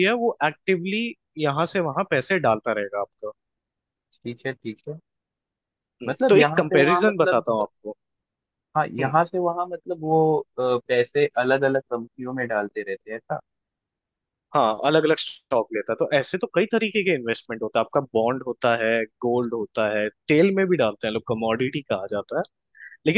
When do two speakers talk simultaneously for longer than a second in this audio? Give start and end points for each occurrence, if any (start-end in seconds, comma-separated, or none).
6.1-7.4